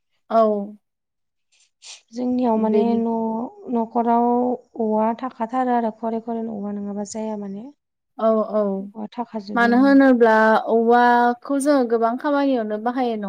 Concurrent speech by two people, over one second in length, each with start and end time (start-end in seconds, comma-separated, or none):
none